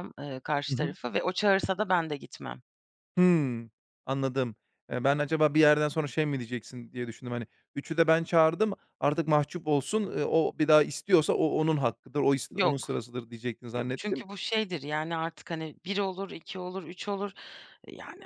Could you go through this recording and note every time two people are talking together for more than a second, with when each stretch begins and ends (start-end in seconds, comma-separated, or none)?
none